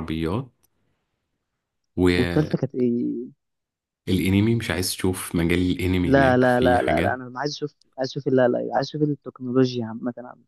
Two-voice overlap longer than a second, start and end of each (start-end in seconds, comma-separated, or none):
6.0-7.2